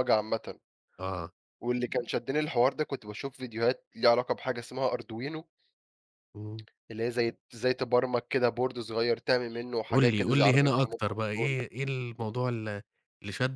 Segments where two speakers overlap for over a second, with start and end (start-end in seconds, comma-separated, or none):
9.9-11.6